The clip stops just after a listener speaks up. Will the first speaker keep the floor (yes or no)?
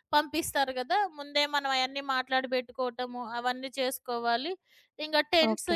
yes